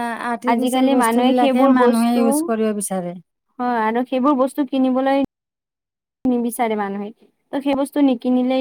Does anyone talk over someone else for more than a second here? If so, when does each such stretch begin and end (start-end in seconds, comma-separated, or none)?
0.6-3.1